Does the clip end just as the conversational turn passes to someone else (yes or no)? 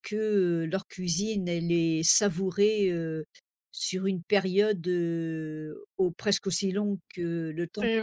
yes